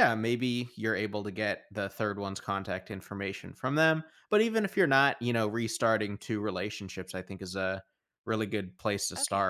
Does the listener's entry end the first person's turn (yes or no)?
yes